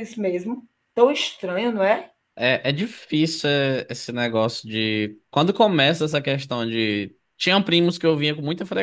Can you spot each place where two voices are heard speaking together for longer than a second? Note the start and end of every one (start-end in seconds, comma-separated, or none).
none